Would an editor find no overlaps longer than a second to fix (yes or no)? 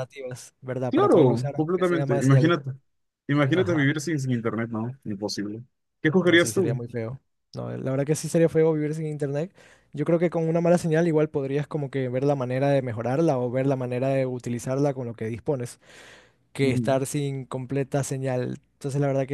no